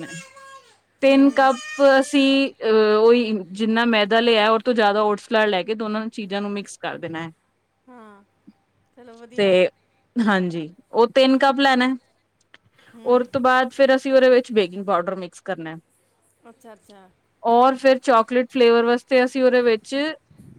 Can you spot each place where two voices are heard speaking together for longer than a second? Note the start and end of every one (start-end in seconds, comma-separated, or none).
none